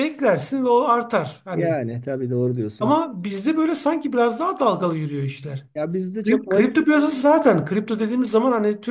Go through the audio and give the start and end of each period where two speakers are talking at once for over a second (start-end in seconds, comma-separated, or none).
none